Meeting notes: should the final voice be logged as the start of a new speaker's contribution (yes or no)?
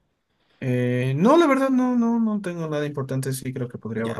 yes